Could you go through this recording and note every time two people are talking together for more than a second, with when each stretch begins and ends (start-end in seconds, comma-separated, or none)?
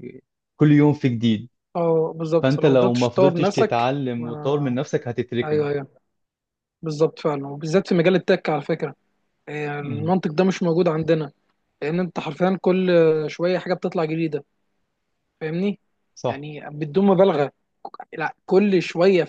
2.4-4.8